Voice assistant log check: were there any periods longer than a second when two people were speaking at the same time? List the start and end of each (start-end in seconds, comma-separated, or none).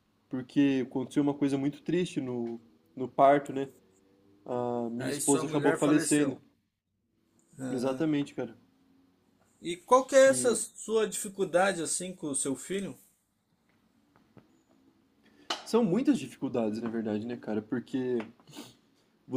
5.0-6.4